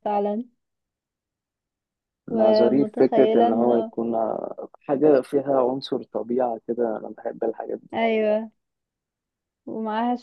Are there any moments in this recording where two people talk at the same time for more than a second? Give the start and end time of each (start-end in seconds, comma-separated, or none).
2.3-3.9